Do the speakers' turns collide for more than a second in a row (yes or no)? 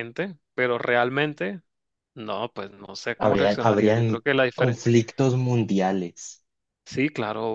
yes